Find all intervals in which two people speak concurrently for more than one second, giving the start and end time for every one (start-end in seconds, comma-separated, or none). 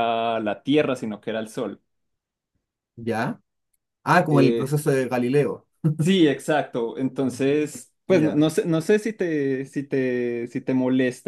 none